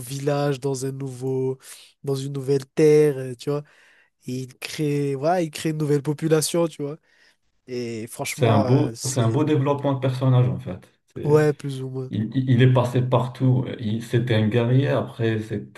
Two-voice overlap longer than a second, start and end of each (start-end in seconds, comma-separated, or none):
8.3-9.5